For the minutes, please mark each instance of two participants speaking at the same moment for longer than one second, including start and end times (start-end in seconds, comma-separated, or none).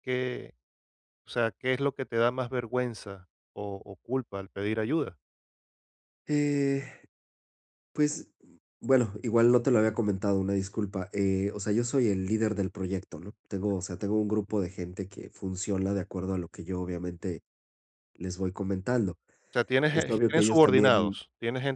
19.9-21.2